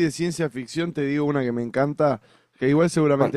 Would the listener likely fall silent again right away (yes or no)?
yes